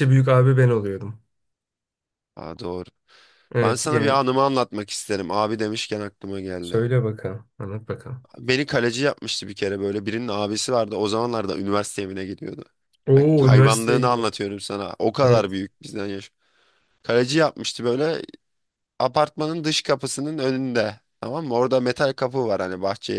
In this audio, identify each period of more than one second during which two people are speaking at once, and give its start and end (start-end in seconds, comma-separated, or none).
13.2-14.4